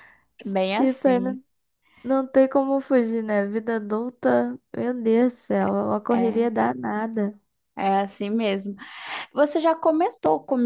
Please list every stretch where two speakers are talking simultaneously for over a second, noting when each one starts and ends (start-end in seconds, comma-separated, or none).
none